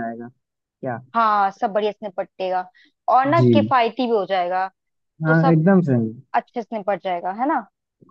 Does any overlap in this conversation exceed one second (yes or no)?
no